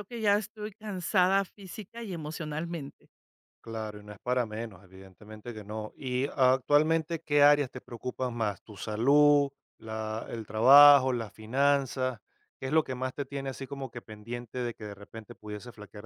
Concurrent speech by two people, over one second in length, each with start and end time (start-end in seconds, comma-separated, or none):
none